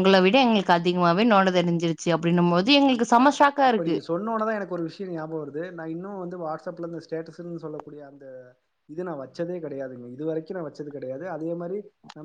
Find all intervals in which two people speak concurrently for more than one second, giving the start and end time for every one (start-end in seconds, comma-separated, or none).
none